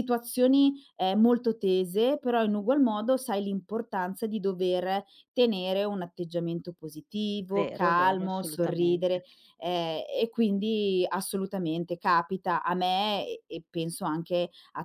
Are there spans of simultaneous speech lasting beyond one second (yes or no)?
yes